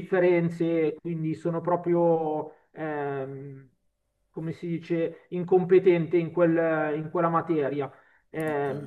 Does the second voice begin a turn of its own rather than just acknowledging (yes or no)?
yes